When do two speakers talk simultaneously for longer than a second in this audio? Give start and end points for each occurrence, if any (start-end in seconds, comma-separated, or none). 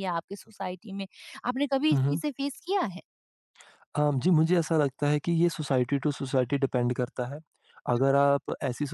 none